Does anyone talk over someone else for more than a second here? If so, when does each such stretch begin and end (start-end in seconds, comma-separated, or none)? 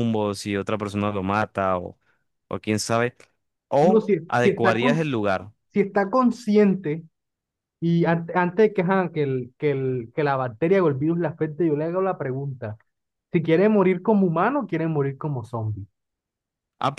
3.8-5.5